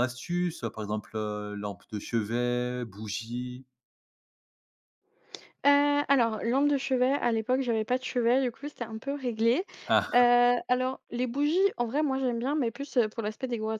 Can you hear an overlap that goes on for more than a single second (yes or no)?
no